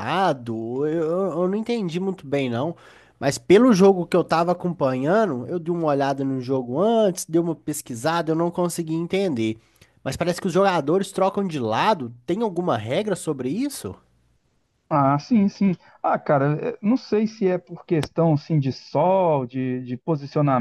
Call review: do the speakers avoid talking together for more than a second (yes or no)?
yes